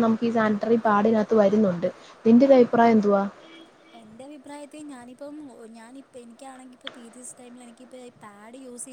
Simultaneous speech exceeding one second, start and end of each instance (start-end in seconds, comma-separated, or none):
none